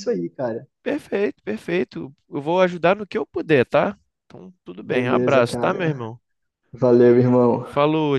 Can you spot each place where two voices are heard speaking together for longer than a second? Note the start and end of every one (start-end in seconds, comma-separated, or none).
4.8-6.1